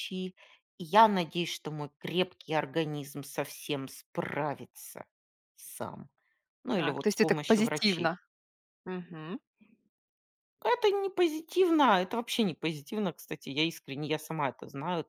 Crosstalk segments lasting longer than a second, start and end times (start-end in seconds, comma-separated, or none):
6.7-8.2